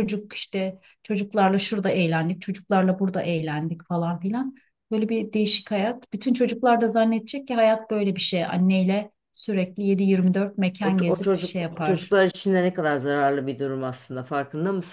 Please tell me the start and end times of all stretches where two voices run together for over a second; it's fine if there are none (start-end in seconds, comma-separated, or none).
10.8-12.2